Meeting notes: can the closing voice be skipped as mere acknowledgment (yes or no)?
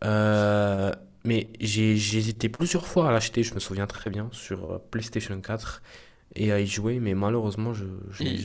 no